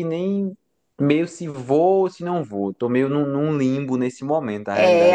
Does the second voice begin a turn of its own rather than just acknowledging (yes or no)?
yes